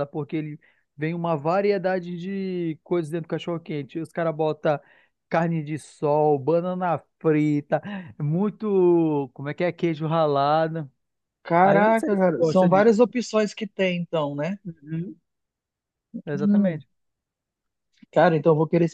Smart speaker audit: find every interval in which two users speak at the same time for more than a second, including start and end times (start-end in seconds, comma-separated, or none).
11.6-13.1